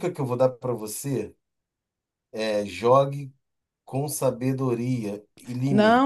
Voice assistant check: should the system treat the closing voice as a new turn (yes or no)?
yes